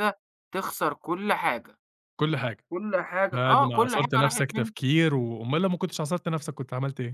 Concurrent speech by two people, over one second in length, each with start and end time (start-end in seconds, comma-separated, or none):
3.3-4.7